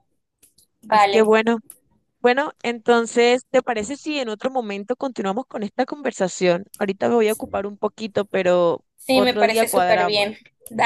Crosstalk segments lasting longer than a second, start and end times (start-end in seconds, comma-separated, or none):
9.0-10.3